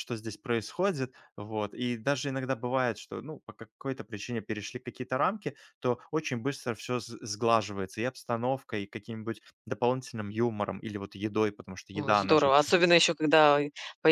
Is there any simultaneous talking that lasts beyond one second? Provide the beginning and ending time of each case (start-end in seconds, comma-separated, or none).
none